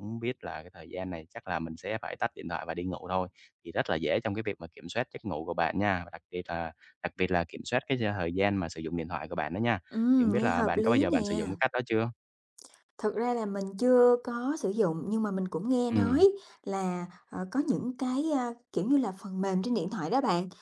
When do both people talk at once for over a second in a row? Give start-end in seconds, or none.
10.2-11.5